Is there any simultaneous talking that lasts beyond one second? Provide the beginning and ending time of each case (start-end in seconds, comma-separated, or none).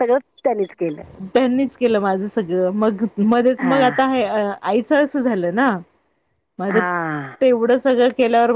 none